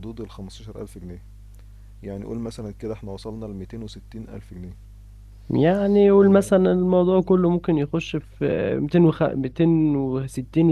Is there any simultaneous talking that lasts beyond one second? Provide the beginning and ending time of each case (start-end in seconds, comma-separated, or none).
none